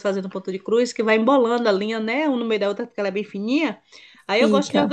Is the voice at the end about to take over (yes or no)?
no